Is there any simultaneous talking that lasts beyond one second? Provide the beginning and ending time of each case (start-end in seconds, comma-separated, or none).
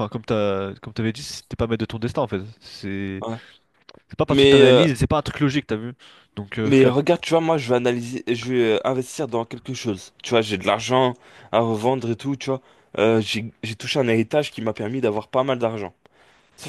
none